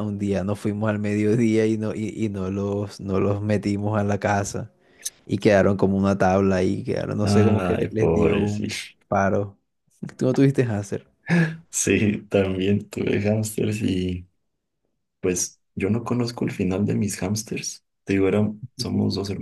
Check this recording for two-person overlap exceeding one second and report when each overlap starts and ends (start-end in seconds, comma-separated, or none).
7.2-8.9